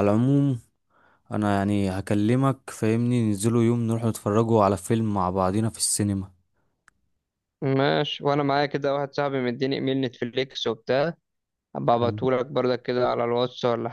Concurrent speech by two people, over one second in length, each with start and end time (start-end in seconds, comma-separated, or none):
none